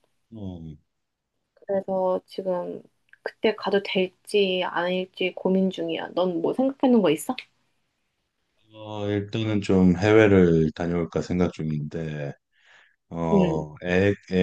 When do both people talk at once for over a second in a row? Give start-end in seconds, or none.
none